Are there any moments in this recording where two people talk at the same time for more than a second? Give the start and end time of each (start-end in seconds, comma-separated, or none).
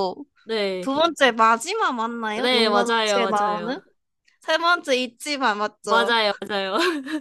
2.4-3.8